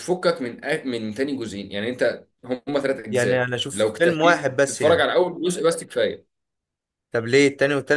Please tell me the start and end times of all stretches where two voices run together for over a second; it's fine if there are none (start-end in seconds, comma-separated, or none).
3.1-5.1